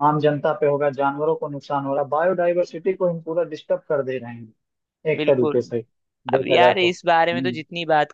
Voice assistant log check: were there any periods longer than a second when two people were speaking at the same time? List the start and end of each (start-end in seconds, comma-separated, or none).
6.4-7.6